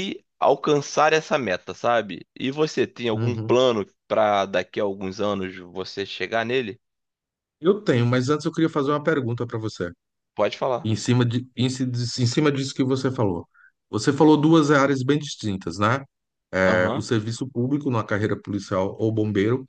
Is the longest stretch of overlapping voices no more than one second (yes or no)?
yes